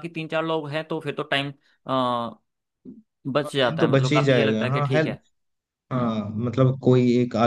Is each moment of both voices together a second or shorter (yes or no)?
no